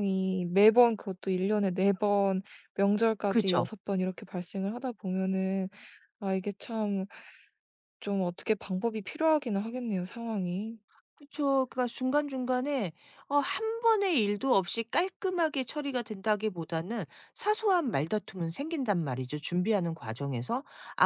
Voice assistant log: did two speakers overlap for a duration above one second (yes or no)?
no